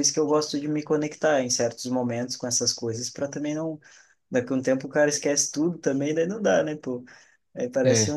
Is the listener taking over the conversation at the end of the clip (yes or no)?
no